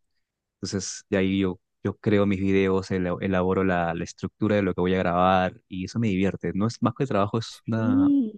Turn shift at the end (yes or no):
no